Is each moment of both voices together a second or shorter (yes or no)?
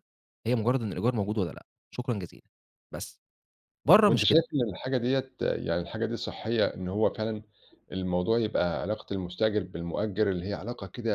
yes